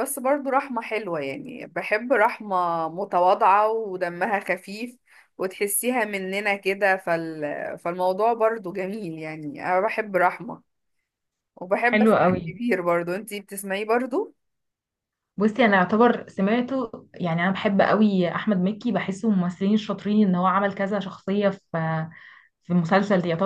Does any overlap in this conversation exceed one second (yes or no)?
no